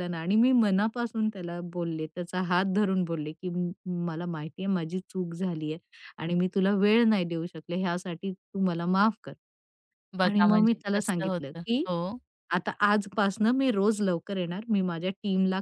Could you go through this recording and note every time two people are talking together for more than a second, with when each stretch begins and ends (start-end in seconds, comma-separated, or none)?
10.2-11.8